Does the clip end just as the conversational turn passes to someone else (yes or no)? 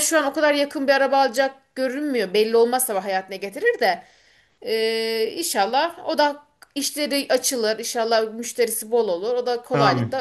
yes